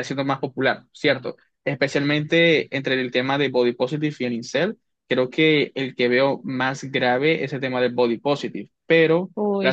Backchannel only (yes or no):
yes